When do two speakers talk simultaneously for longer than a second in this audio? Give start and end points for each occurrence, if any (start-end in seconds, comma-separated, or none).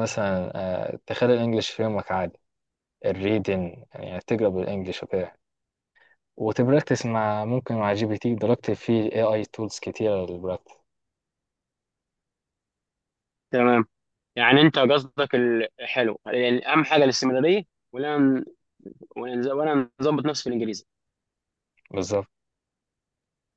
none